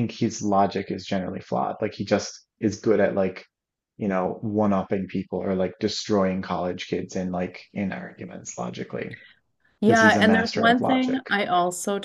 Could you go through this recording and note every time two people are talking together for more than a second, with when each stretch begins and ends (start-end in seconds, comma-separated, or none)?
9.8-11.2